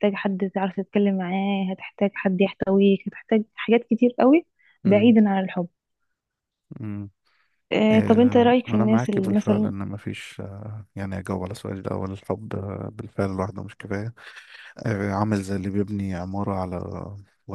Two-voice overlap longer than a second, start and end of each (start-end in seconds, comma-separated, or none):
7.9-9.7